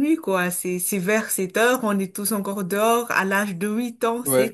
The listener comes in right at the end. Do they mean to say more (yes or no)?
no